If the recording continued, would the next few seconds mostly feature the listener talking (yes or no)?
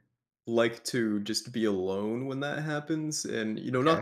no